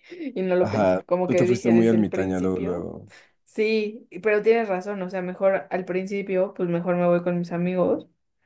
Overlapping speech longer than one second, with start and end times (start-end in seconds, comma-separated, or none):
0.6-2.9